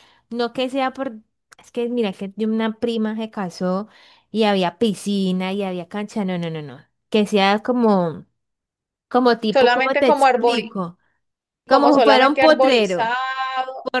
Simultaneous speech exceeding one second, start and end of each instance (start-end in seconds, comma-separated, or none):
9.5-10.7, 11.7-13.2